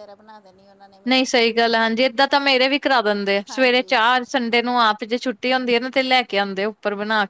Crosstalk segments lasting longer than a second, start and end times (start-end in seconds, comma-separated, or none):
none